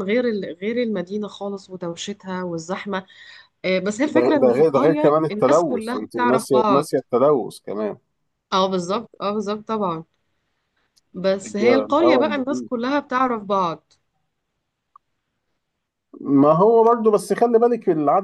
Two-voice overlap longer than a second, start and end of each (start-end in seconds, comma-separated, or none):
4.1-6.9, 11.4-12.7